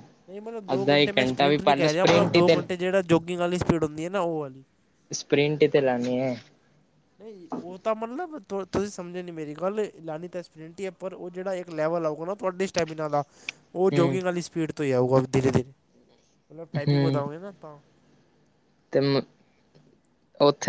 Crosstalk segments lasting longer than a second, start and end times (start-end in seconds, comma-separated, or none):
0.7-2.5